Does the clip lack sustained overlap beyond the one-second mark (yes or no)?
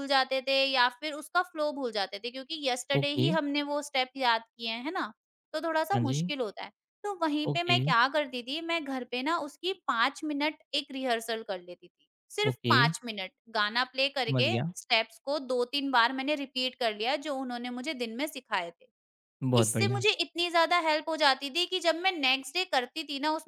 yes